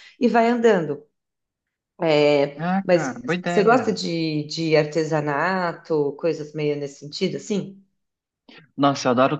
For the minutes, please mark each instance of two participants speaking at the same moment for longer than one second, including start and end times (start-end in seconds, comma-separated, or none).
2.6-4.0